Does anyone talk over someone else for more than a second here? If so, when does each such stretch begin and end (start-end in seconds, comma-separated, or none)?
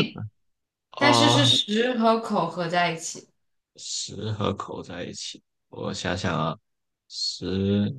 none